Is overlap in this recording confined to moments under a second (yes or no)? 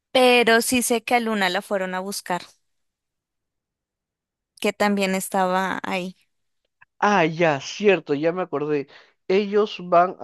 yes